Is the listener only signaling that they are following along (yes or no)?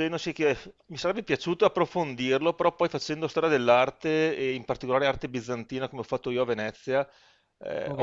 yes